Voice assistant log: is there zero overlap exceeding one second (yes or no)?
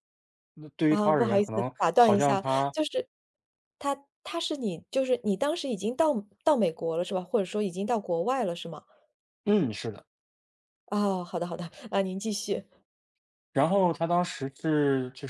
no